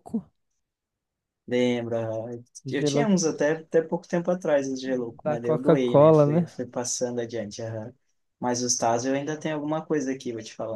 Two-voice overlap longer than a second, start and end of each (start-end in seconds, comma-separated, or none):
5.2-6.5